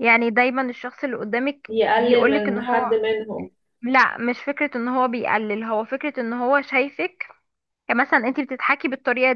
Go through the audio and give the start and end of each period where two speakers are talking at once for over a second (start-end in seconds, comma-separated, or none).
1.7-3.0